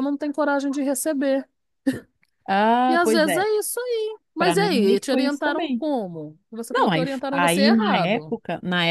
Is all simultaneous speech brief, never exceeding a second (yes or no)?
no